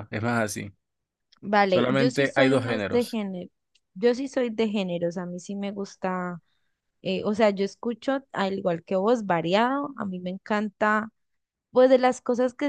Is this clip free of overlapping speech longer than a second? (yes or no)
no